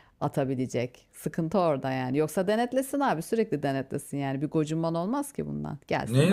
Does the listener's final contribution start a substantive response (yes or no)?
yes